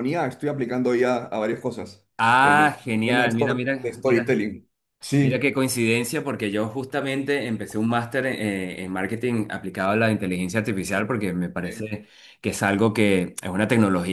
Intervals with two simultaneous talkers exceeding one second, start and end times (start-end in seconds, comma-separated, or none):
2.4-4.4